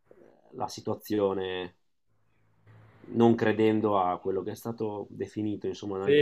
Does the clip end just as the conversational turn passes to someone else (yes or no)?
yes